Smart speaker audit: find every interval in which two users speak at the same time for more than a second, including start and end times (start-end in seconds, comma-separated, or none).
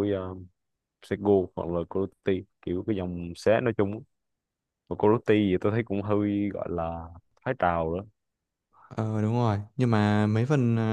none